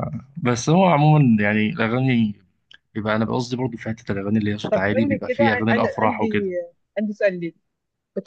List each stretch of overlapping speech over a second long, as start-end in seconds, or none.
4.6-6.5